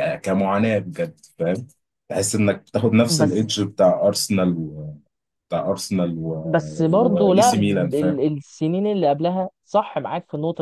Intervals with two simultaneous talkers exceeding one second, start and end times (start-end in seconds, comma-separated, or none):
6.9-8.2